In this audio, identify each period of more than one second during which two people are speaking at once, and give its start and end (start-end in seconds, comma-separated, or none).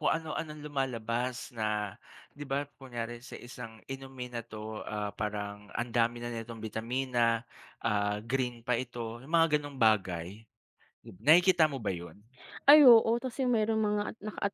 none